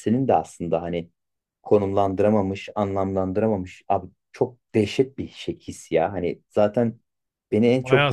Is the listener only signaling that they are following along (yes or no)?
no